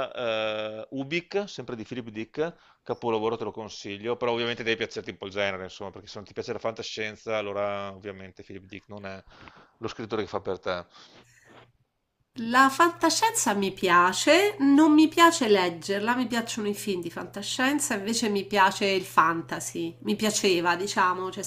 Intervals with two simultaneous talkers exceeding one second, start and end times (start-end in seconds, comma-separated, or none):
none